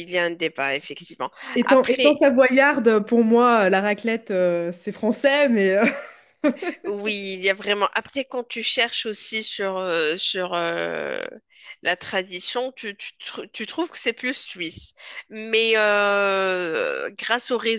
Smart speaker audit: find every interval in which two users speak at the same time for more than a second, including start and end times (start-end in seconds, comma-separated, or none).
none